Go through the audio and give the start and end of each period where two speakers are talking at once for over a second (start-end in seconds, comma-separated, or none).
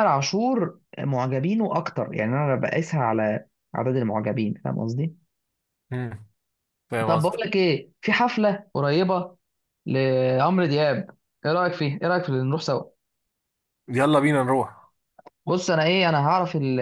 none